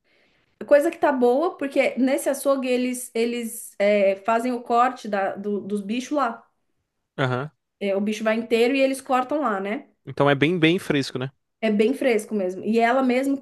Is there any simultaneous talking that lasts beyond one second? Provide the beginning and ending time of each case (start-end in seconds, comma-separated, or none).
none